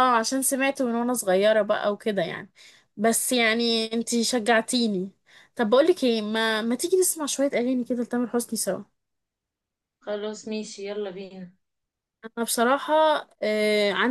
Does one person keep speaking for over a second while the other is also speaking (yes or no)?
no